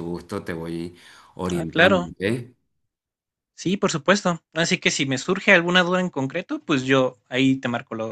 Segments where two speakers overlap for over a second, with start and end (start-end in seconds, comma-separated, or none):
none